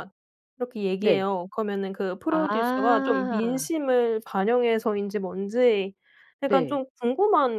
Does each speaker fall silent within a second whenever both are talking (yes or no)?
no